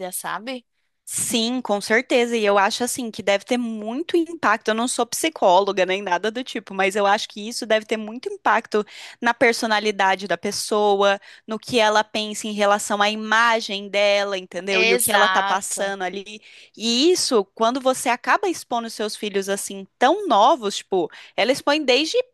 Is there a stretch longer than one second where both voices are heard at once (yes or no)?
yes